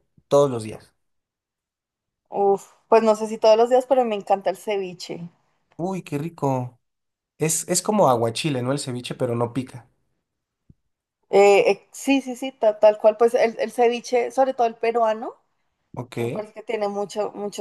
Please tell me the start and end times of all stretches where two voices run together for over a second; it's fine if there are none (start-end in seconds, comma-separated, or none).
none